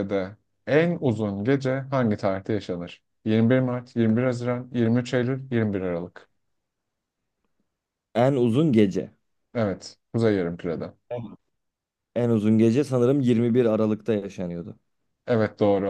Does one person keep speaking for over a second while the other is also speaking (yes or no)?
no